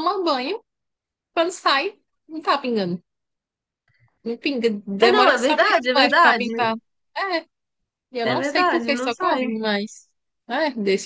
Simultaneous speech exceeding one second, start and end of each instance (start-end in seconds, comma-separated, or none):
5.0-6.5, 8.2-9.4